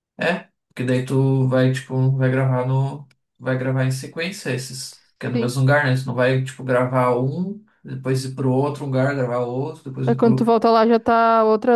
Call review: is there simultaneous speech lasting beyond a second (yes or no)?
no